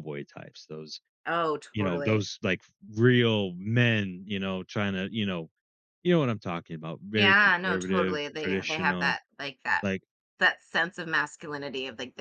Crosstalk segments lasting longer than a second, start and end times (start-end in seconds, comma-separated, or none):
7.1-9.2